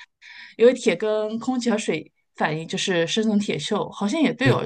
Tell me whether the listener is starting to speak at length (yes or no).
no